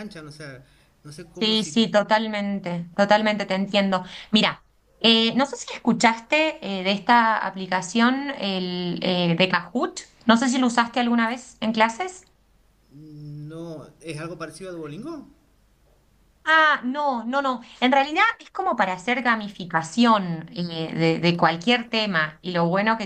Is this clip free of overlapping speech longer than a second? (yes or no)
yes